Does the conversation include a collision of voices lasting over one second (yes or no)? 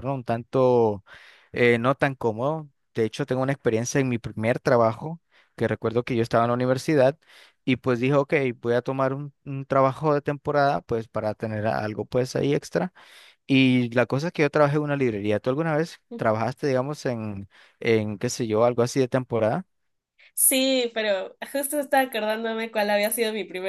no